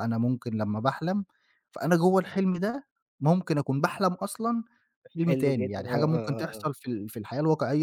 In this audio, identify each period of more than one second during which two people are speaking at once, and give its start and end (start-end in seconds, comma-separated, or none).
5.2-6.7